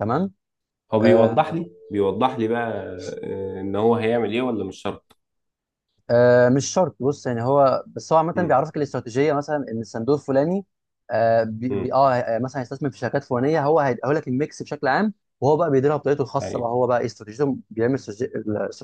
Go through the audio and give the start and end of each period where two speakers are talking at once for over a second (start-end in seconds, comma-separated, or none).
none